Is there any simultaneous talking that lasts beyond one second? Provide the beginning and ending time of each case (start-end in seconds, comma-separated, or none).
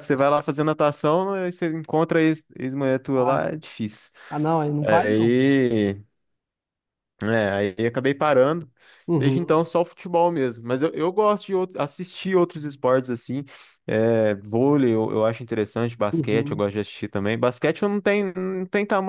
none